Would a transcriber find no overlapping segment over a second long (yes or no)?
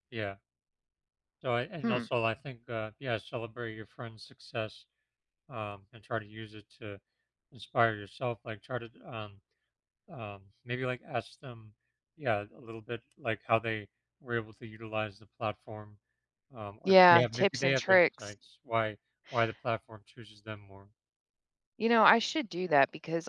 no